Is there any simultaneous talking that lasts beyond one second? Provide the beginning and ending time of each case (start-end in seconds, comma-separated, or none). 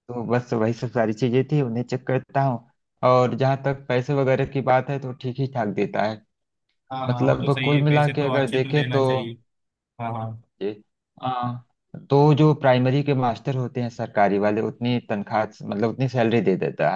7.1-9.0